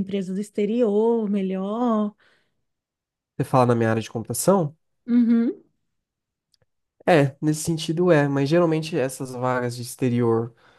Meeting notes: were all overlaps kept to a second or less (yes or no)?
yes